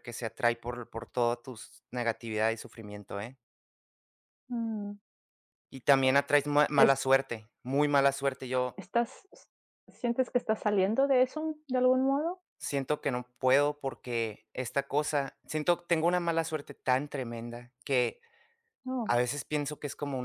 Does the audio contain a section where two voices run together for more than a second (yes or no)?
no